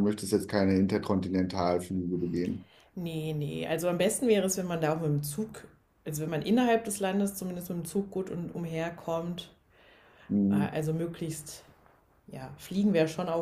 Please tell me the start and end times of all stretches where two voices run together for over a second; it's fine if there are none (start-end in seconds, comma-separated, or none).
none